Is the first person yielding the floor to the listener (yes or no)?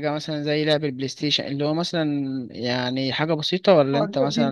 yes